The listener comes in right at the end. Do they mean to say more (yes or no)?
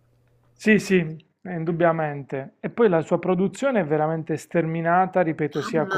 no